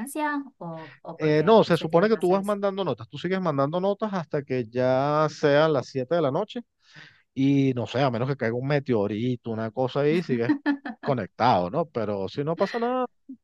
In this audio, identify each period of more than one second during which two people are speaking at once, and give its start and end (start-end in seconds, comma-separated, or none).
1.2-2.6